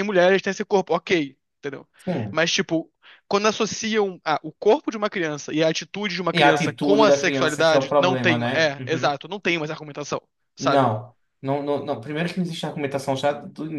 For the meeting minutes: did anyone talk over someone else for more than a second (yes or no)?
yes